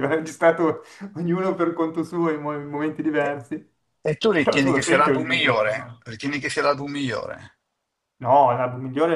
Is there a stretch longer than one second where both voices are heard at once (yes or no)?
yes